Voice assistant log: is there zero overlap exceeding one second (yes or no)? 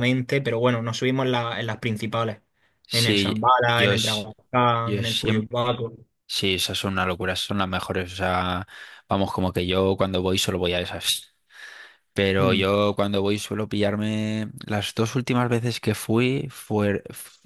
no